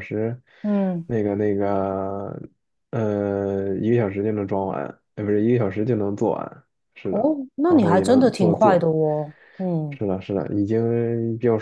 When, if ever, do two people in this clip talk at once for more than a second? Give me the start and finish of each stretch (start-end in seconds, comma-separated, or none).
7.1-8.8